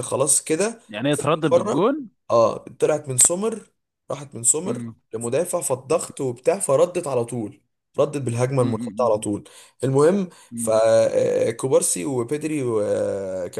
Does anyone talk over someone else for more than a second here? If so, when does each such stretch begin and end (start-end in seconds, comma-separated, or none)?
none